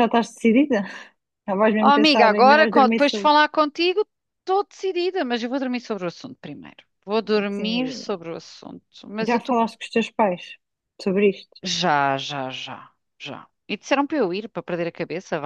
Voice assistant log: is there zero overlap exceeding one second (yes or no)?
no